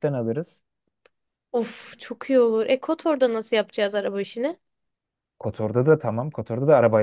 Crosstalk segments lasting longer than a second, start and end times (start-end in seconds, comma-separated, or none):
none